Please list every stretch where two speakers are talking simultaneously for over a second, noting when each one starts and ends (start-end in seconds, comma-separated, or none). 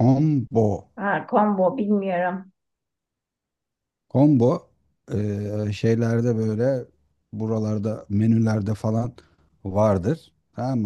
none